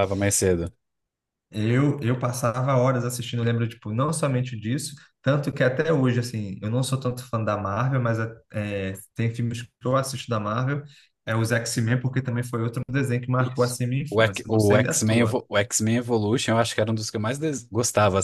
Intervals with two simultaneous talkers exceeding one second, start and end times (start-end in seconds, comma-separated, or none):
13.4-15.4